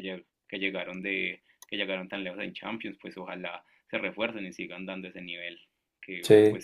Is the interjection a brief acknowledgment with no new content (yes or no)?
yes